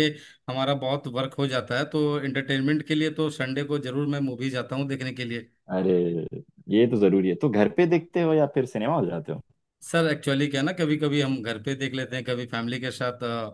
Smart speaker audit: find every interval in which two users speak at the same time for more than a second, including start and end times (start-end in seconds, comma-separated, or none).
none